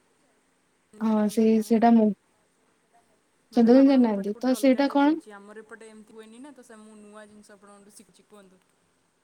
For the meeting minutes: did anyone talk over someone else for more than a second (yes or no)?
yes